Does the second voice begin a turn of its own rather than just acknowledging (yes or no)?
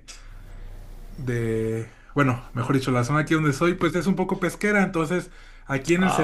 no